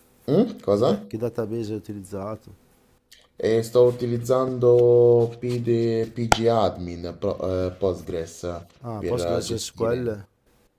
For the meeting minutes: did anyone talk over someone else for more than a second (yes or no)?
yes